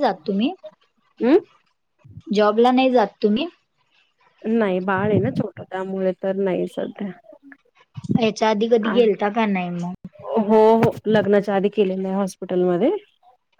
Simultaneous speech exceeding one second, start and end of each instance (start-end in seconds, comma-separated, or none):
none